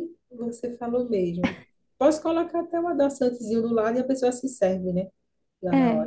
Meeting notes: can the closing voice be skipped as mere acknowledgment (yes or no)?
no